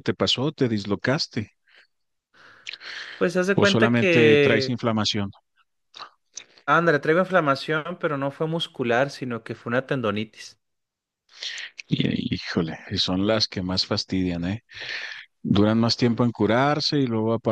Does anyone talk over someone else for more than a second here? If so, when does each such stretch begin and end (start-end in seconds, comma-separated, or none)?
3.5-4.8